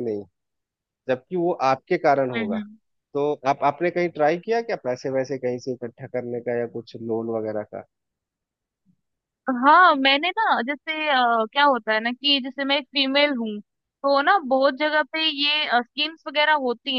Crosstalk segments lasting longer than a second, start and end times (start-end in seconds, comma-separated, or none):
none